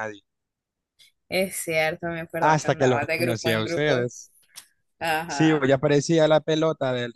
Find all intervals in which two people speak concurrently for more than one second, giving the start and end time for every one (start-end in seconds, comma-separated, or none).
2.4-4.1